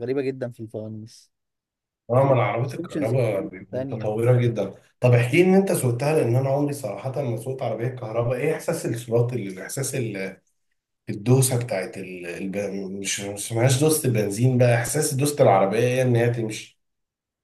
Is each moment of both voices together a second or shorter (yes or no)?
no